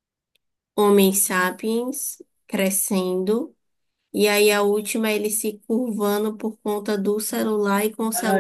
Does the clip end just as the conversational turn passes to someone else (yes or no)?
yes